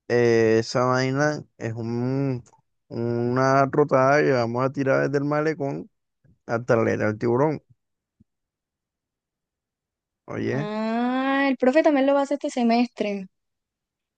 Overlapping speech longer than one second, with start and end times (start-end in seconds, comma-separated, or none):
none